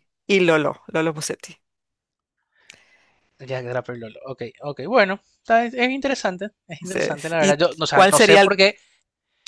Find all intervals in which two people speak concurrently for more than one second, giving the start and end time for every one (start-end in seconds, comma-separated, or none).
6.8-8.5